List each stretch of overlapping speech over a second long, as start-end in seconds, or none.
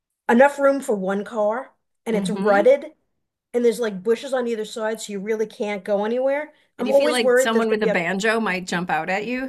6.8-8.0